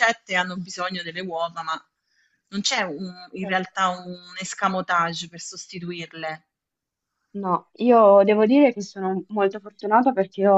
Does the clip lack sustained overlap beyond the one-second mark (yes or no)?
yes